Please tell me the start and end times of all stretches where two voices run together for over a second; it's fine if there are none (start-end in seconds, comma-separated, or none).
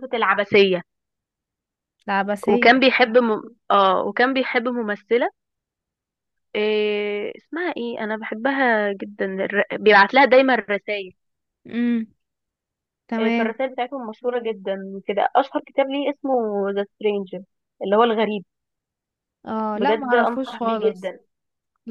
19.7-21.1